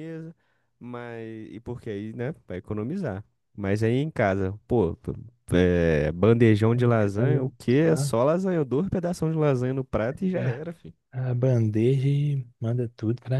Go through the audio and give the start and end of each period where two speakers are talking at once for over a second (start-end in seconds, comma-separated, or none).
none